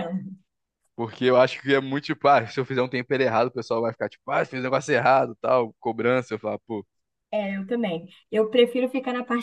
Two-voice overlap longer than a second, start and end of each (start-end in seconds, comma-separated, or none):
none